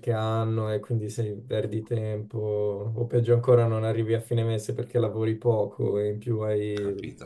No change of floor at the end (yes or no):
no